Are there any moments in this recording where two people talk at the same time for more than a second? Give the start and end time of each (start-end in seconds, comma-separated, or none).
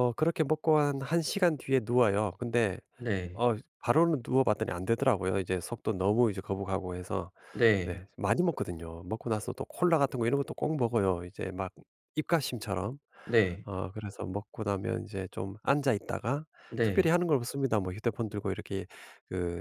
none